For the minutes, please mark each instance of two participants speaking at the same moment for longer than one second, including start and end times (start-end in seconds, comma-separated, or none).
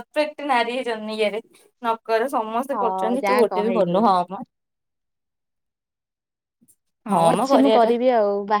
2.7-4.0